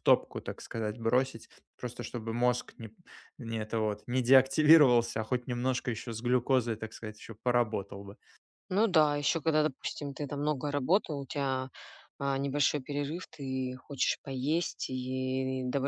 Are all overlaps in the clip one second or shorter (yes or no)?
yes